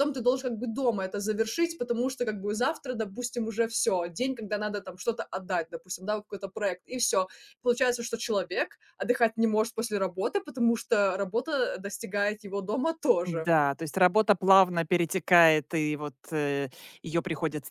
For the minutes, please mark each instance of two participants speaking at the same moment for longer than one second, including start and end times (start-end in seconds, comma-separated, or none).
none